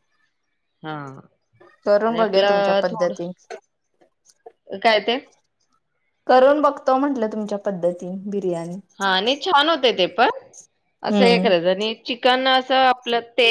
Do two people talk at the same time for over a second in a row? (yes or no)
yes